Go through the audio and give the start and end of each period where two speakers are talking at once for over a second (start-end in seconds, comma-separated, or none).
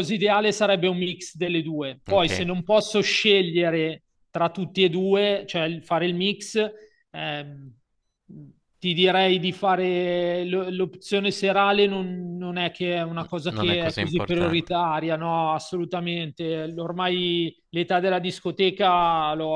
13.5-14.8